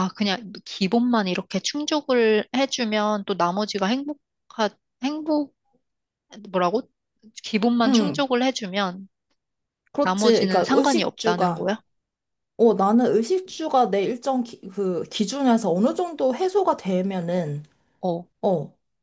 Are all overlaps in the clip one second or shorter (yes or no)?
no